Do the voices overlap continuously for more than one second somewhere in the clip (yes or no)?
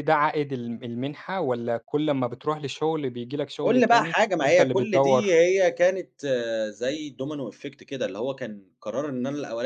yes